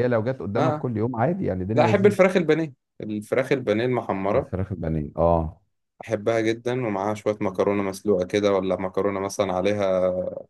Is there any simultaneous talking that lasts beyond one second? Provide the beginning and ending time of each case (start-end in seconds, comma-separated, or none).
none